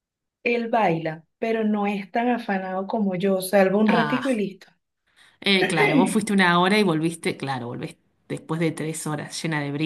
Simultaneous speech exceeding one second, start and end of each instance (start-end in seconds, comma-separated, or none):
none